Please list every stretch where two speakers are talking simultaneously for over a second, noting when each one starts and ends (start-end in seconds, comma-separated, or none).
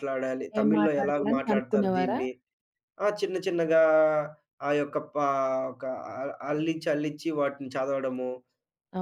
0.6-2.2